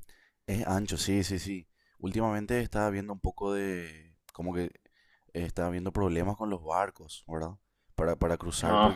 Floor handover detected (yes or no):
no